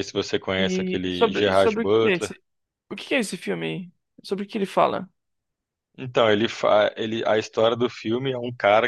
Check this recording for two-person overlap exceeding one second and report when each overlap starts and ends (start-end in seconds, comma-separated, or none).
0.6-2.3